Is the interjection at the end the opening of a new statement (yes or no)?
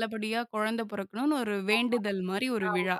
yes